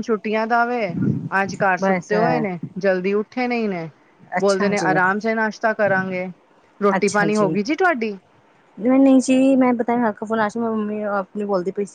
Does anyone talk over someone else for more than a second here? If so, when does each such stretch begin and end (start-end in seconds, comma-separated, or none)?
none